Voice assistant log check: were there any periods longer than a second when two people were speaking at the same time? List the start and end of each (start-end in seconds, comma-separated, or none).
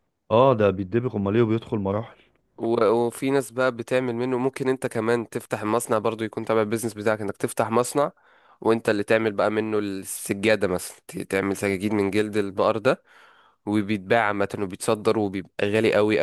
none